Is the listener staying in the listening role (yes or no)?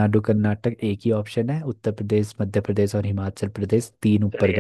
no